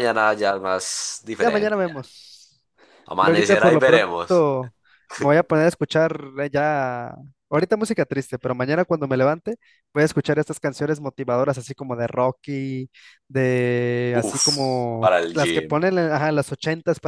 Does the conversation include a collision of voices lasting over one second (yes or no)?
yes